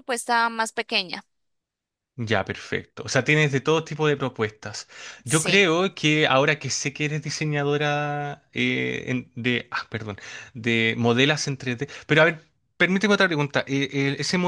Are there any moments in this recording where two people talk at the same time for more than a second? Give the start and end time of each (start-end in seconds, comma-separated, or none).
none